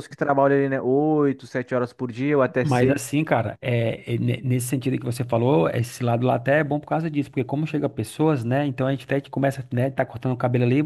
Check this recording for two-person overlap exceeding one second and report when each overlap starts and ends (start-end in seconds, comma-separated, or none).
none